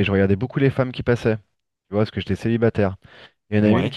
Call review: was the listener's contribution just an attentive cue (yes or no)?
yes